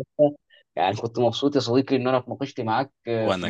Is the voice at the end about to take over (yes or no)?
no